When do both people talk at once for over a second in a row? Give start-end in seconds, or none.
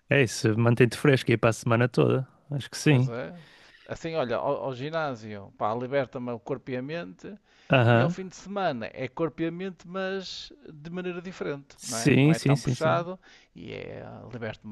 11.8-13.1